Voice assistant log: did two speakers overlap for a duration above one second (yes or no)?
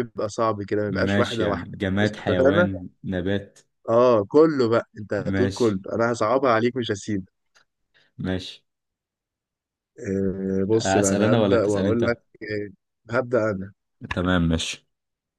yes